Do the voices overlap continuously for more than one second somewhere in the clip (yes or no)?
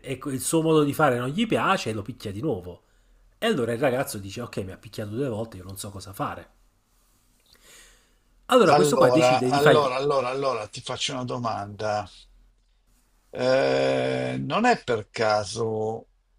yes